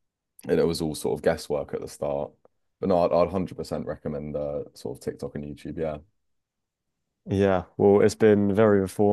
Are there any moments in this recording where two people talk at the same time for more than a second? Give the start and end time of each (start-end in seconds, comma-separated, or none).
none